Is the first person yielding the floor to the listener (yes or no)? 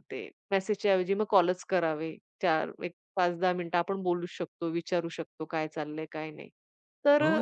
yes